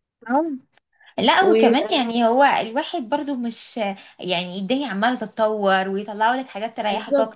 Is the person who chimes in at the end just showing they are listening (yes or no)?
yes